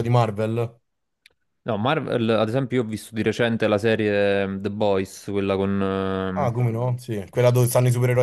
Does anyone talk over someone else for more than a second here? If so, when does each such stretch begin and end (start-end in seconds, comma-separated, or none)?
none